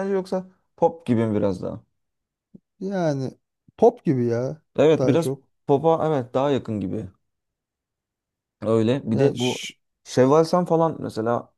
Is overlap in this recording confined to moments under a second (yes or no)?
yes